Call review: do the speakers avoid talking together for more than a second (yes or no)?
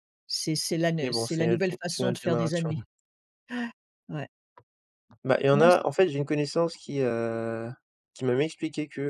no